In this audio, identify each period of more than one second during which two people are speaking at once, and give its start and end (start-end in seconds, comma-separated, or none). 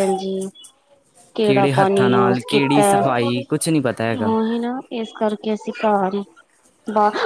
1.4-2.9